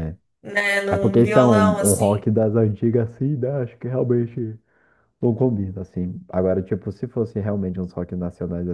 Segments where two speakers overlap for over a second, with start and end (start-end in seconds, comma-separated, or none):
0.9-2.2